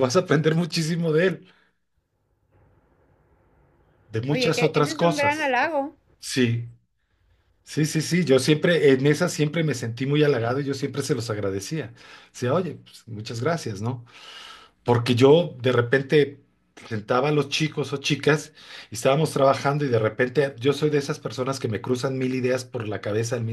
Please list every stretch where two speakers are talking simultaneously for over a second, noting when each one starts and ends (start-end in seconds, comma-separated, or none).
4.3-5.6